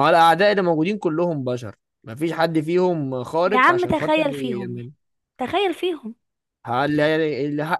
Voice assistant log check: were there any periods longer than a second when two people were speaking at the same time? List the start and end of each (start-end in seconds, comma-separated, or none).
3.5-4.9